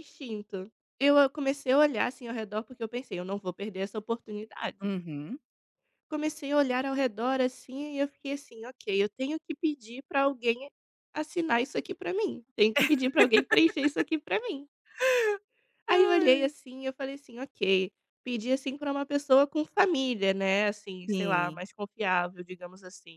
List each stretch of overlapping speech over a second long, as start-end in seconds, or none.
none